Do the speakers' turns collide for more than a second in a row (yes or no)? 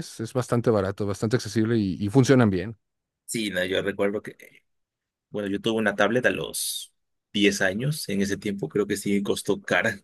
no